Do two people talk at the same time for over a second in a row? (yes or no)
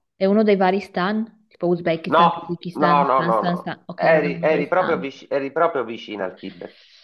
yes